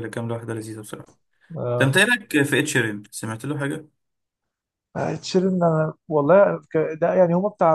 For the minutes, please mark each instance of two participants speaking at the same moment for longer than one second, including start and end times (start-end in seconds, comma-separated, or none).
none